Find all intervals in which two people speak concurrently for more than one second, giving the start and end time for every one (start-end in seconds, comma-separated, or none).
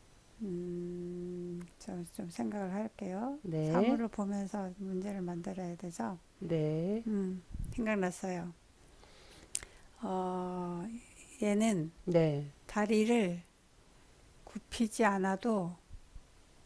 none